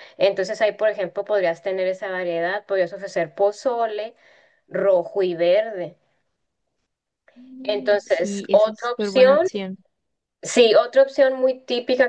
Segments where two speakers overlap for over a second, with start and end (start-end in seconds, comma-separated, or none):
7.6-9.5